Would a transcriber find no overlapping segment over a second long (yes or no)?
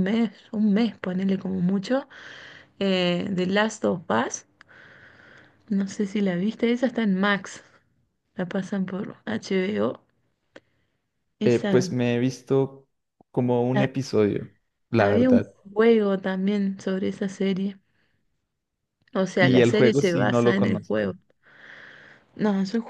no